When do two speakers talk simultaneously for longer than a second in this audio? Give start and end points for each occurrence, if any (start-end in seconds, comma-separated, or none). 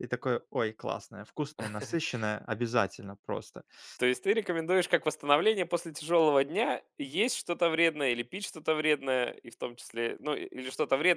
none